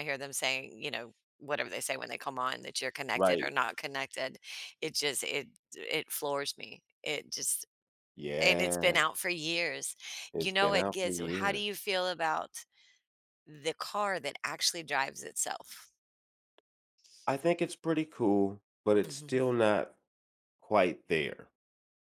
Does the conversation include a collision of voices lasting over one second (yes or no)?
yes